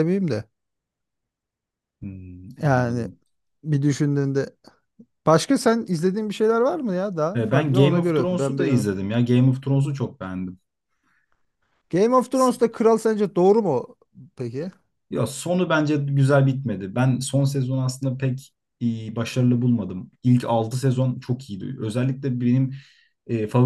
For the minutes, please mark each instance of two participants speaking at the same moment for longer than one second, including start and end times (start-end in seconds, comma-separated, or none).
7.3-8.7